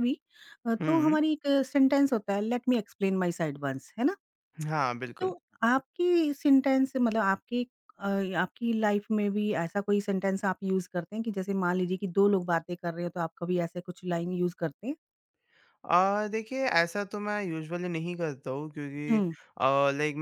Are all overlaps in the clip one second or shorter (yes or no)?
yes